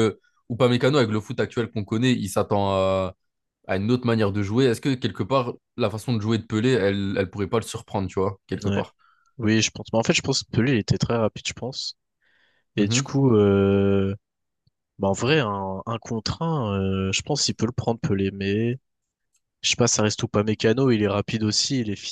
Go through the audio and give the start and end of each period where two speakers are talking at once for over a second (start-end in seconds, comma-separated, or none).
none